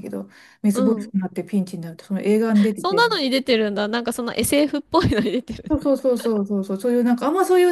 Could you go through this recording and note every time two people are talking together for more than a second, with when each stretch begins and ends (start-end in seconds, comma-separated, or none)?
none